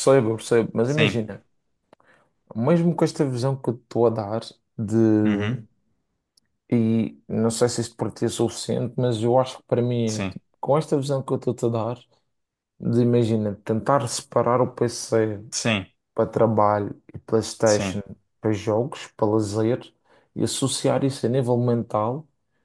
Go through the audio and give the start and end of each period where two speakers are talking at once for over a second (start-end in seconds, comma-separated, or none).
none